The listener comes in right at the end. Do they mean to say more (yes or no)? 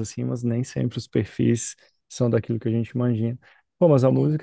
no